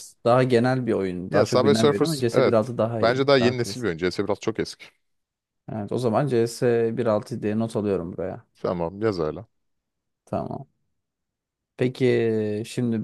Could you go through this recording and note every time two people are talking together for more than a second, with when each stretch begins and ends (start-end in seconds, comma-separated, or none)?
1.3-3.9